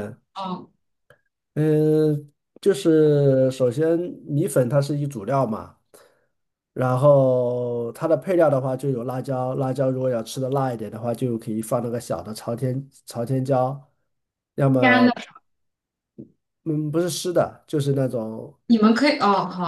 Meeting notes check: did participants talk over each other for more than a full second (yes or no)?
no